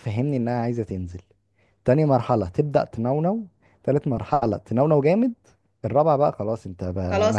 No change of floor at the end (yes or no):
no